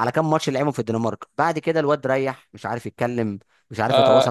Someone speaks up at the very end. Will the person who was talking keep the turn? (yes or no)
no